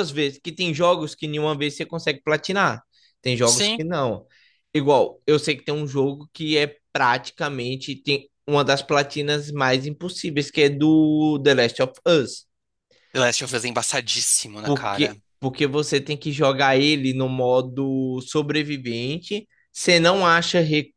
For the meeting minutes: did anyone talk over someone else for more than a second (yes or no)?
no